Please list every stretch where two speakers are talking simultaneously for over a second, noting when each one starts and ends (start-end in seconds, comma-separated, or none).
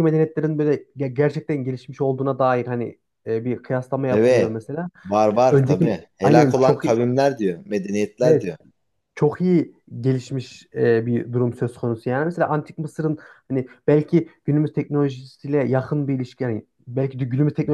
5.3-7.0